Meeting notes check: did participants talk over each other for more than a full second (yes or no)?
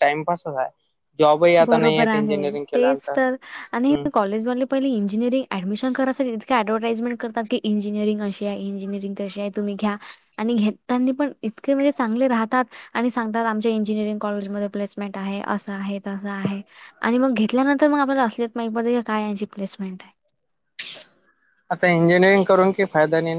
yes